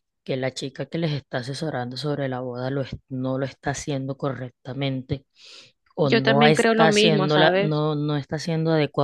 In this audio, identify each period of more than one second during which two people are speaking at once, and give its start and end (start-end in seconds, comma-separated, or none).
6.0-7.8